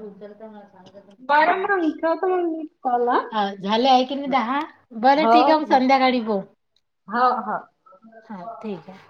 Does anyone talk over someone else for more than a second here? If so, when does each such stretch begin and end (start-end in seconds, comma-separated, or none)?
none